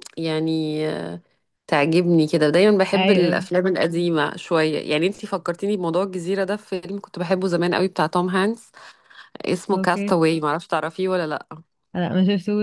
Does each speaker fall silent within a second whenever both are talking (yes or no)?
yes